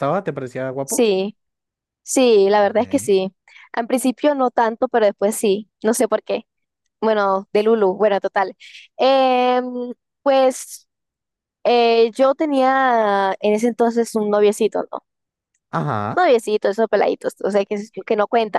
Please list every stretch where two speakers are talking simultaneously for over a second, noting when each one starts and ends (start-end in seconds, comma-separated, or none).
none